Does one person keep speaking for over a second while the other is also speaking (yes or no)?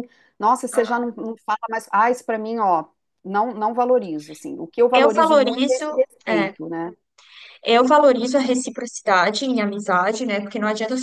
yes